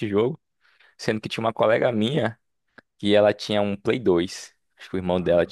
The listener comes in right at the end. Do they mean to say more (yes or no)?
no